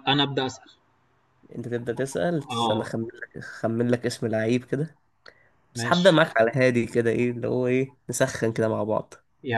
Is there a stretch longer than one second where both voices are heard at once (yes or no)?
no